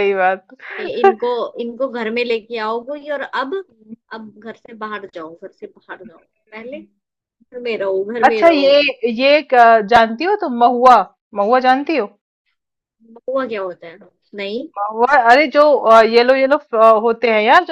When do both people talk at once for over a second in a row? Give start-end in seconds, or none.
none